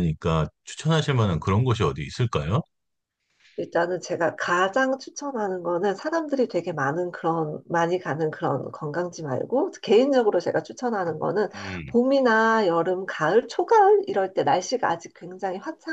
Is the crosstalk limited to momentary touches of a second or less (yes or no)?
yes